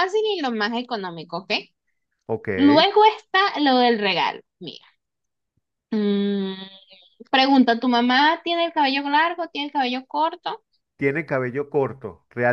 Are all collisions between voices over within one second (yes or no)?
yes